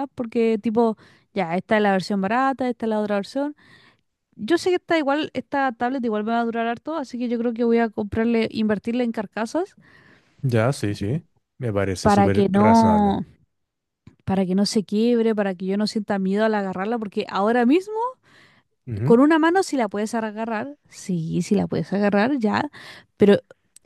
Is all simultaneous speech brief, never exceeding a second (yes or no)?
no